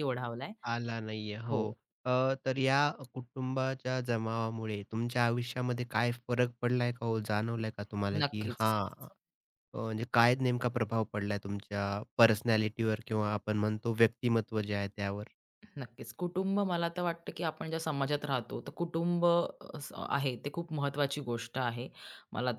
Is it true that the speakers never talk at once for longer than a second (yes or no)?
yes